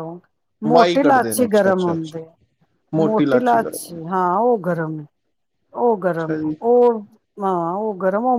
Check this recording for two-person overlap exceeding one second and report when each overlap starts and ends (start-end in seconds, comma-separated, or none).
0.7-2.2